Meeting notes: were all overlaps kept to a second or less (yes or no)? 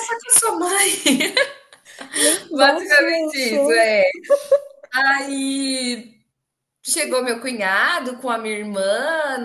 no